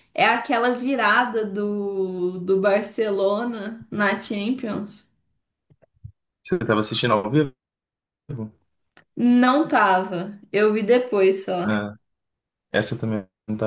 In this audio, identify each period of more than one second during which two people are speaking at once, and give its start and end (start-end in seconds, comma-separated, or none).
none